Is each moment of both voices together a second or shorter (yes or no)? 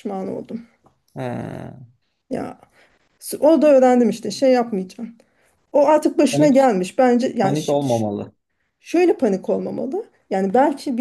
yes